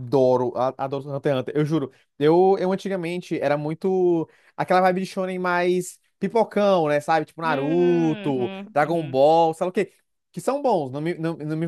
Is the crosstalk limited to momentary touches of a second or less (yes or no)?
no